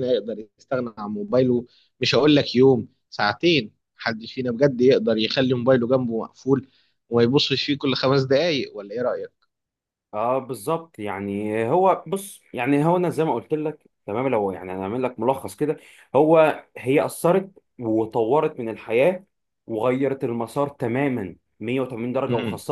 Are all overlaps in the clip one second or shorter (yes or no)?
yes